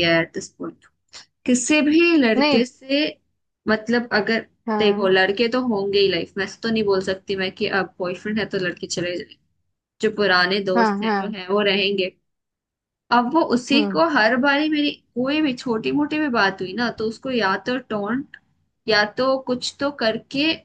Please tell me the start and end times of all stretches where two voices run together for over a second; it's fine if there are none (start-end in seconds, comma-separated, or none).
none